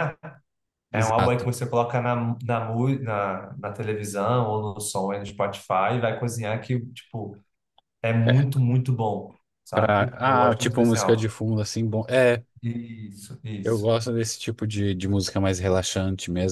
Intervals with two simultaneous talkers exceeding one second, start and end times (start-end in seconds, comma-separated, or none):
9.7-11.3